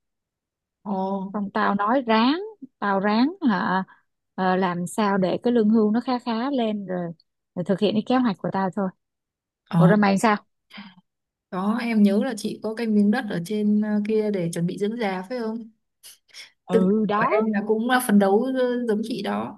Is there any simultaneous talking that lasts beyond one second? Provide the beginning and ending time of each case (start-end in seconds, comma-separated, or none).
none